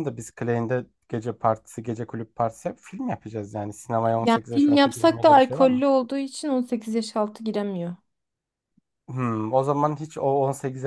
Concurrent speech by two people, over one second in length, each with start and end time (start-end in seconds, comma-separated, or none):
4.2-5.8